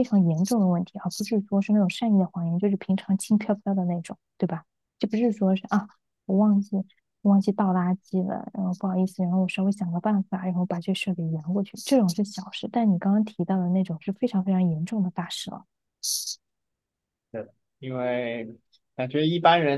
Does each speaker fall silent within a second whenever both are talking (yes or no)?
yes